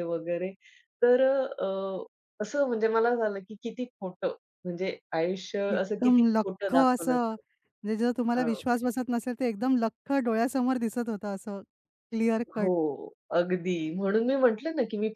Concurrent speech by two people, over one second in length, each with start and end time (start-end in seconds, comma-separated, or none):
5.7-7.2